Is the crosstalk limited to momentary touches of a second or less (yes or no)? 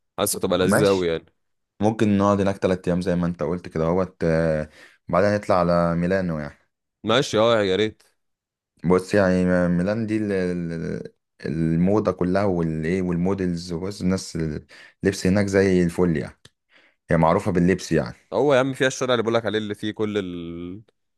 yes